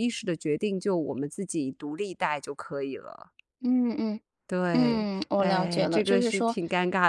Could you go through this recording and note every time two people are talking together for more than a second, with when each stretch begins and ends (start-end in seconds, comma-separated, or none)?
4.7-6.6